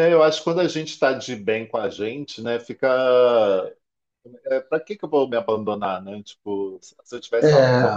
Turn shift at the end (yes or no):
no